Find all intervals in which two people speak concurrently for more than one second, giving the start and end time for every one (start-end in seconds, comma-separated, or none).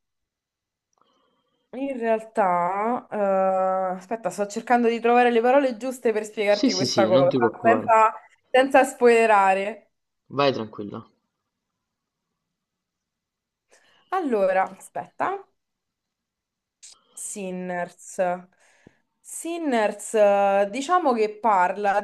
6.5-8.0